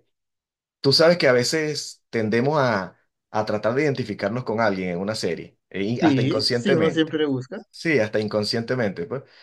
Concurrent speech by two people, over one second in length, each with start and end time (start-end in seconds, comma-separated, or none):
5.9-7.2